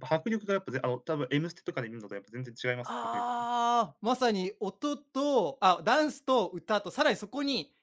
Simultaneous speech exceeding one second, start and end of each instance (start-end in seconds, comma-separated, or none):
none